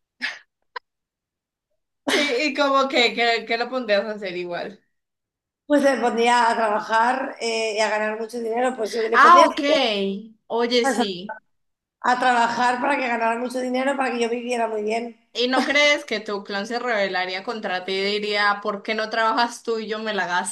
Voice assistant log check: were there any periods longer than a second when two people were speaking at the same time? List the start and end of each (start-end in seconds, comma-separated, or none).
none